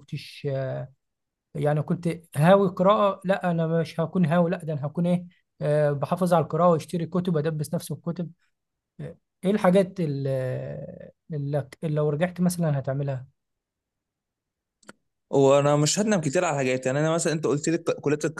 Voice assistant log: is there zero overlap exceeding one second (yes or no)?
yes